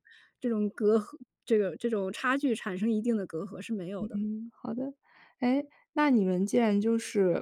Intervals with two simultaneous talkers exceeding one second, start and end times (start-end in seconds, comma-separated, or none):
none